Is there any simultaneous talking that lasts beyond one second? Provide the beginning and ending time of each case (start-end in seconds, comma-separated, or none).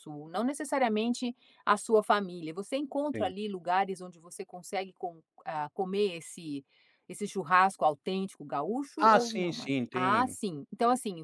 9.0-10.4